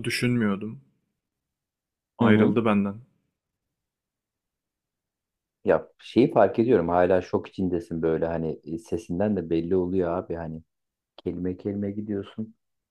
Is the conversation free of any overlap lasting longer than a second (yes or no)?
yes